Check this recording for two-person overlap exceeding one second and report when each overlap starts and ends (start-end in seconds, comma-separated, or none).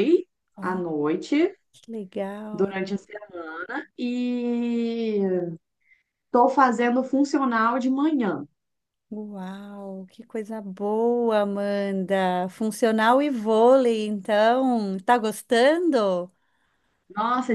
none